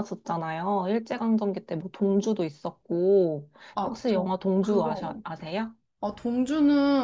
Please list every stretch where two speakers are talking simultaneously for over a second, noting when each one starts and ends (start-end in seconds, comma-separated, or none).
3.8-5.2